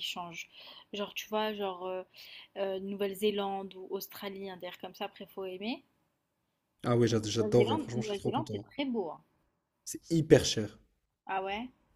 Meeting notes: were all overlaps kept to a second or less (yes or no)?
no